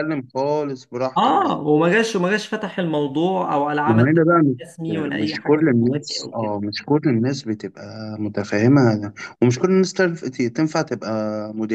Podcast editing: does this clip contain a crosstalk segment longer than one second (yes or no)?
yes